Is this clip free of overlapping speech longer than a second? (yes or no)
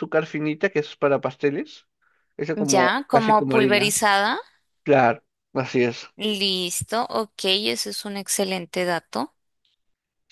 no